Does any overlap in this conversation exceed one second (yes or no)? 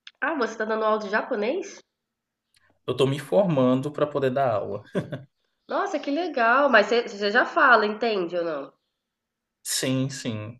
no